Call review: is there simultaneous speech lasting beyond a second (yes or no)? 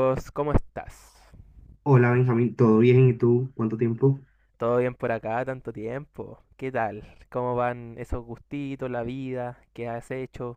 no